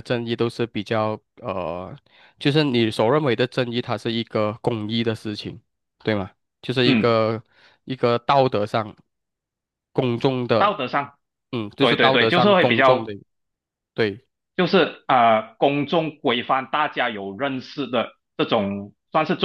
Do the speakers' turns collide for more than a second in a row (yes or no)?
yes